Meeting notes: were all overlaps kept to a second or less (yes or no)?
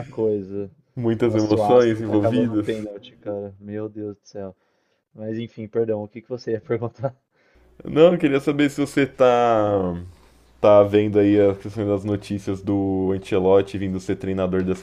no